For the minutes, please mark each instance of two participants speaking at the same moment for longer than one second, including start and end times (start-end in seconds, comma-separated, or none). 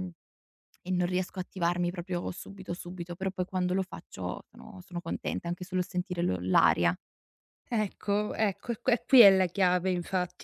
none